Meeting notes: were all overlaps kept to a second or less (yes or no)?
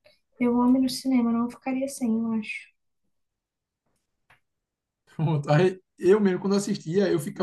yes